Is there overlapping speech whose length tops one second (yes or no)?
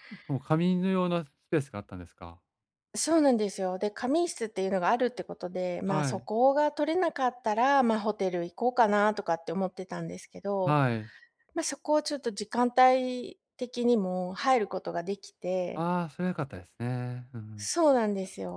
no